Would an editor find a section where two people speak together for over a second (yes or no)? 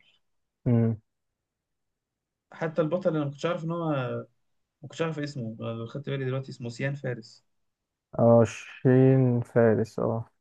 no